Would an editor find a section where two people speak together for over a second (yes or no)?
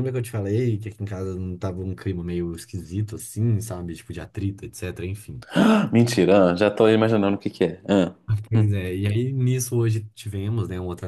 no